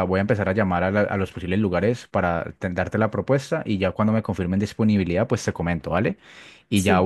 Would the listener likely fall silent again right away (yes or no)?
yes